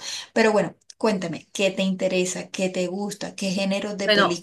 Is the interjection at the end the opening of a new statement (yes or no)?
yes